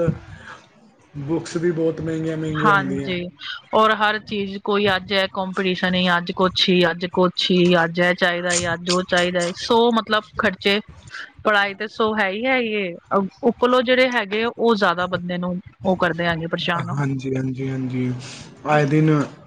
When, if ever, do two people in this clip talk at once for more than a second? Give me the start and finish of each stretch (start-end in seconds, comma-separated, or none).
none